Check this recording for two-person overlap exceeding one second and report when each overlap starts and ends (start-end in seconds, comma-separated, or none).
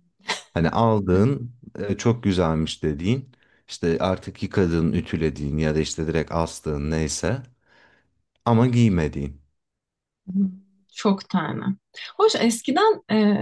none